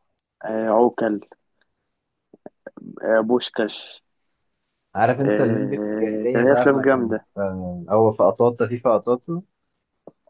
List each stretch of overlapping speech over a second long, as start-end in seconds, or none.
5.2-7.3